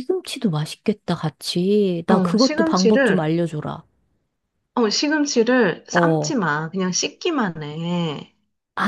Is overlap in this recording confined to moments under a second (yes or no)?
no